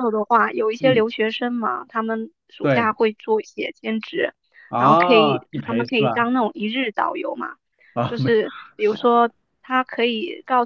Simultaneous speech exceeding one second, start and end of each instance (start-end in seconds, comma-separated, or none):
4.8-6.3